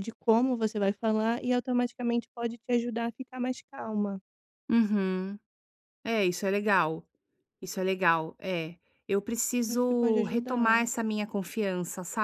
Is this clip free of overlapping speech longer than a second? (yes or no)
no